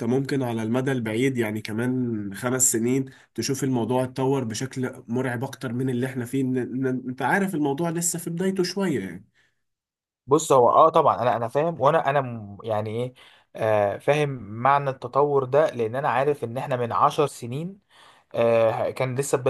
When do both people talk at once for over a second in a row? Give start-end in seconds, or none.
none